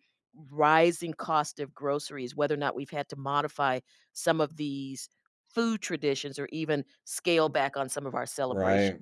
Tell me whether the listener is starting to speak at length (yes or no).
yes